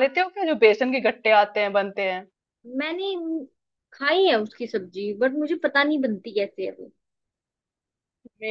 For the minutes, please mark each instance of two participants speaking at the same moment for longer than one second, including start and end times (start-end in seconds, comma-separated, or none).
none